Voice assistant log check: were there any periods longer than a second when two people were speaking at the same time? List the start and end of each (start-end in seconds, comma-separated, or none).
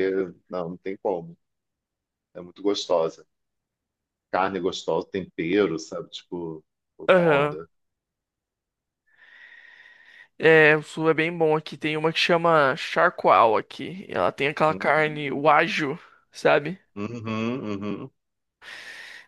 none